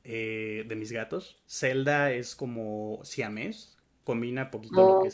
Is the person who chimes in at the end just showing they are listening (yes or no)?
yes